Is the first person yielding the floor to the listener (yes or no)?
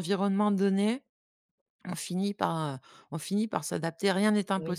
yes